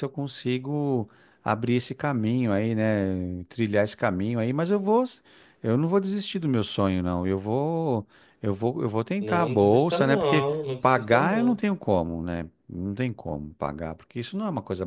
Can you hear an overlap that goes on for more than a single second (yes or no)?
yes